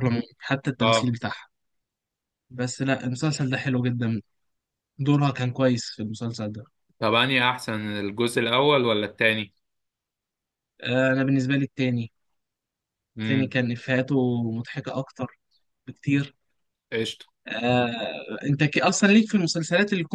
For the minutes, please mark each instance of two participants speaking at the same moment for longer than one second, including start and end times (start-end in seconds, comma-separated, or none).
none